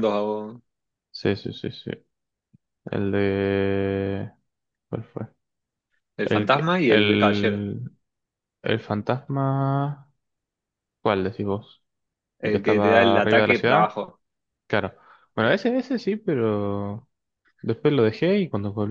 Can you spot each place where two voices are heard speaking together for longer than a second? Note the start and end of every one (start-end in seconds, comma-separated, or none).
6.2-7.6, 12.4-13.9